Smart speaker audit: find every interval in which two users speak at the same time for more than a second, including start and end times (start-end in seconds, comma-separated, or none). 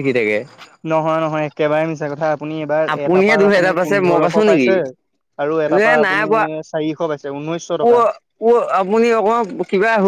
2.9-4.7